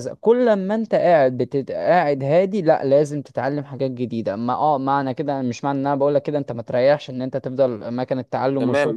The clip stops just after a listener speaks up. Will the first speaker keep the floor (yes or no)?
no